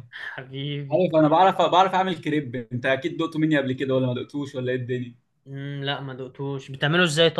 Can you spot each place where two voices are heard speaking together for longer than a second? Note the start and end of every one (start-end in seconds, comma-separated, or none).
none